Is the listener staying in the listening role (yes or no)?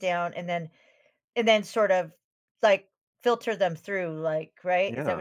no